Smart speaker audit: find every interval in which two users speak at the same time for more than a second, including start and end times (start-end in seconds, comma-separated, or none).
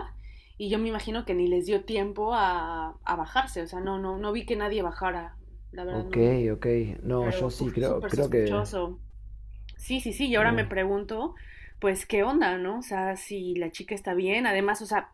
7.2-8.6